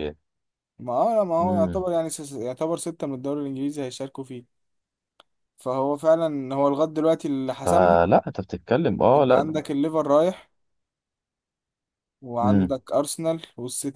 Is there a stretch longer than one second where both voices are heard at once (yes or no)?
no